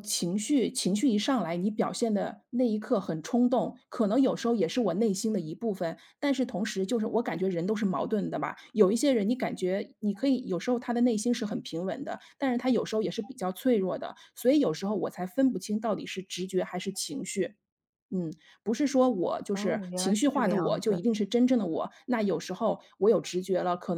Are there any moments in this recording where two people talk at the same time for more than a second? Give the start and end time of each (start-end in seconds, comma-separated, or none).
19.5-21.0